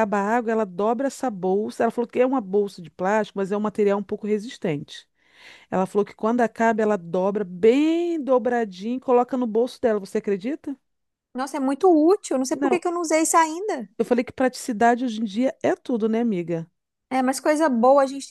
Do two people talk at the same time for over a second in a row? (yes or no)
no